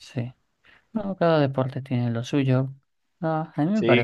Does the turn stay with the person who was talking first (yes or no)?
yes